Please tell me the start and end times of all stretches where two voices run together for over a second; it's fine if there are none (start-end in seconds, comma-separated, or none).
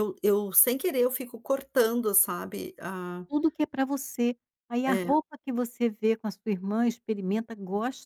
none